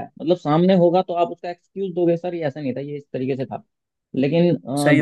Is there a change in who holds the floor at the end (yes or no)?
no